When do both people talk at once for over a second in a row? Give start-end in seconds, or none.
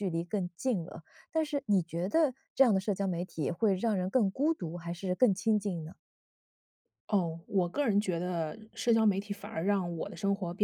none